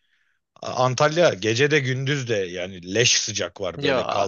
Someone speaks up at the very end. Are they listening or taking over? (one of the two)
taking over